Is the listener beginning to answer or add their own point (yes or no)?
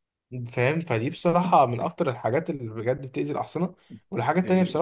no